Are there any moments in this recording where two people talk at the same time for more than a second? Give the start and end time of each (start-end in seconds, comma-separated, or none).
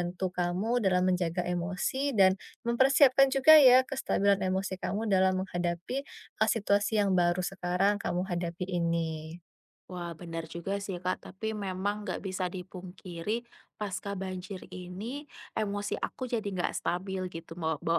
none